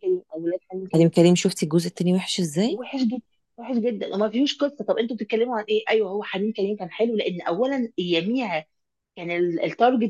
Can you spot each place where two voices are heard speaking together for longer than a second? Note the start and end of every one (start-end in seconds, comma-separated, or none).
none